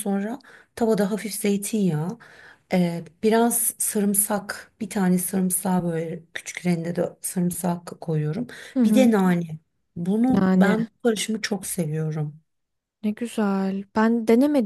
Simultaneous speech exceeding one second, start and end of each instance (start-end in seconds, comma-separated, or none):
none